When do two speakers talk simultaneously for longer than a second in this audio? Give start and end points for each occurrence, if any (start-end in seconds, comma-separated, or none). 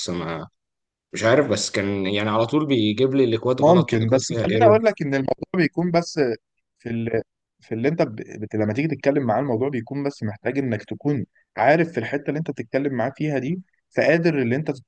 3.6-4.8